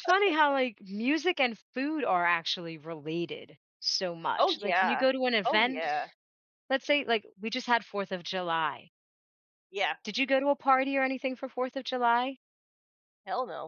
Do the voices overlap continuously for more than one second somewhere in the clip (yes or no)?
yes